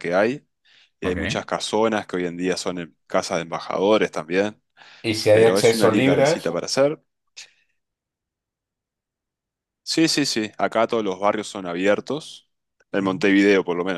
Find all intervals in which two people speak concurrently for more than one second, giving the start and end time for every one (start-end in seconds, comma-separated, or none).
5.3-6.6